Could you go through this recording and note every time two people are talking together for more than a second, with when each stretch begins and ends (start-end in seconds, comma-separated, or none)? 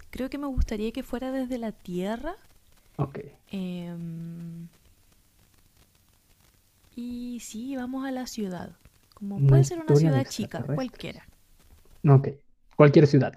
9.3-11.2